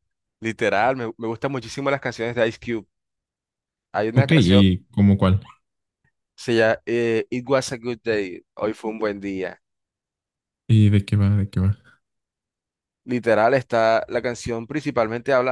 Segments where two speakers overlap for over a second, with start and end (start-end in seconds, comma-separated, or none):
none